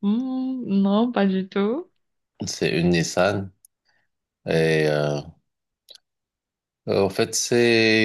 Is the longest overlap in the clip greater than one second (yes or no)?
no